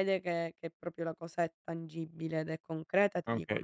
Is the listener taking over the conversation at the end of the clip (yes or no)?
yes